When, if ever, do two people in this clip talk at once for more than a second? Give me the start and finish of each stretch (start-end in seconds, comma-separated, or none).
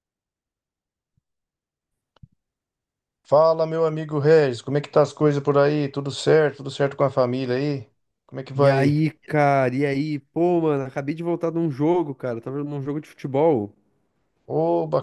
none